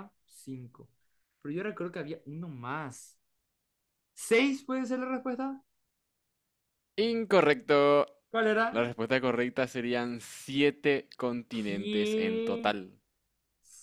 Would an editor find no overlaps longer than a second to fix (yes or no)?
no